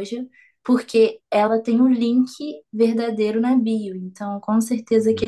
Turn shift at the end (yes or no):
no